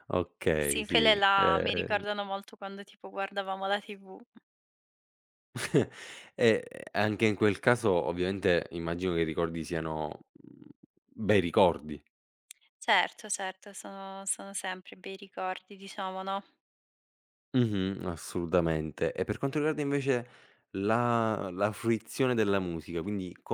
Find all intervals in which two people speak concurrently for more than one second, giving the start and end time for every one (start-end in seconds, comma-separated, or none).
0.6-2.0